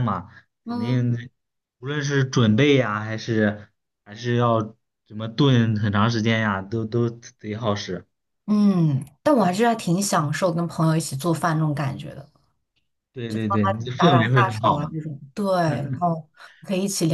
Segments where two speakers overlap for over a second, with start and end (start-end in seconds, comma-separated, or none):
13.3-14.9